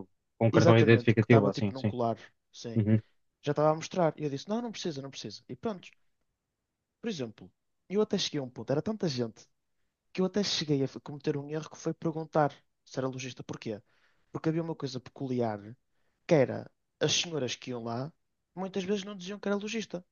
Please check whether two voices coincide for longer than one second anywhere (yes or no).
yes